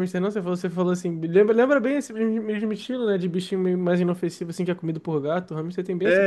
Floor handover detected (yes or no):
yes